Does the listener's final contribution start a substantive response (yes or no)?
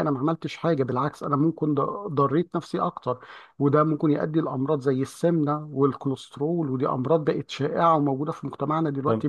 yes